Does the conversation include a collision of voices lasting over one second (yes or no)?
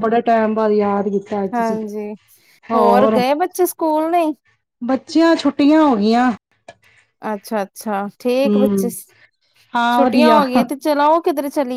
no